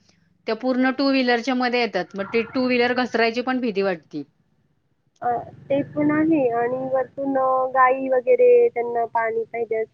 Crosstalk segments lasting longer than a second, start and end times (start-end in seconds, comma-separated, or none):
none